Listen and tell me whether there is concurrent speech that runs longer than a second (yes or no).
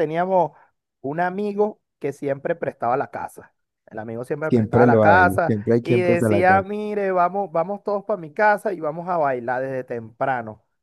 yes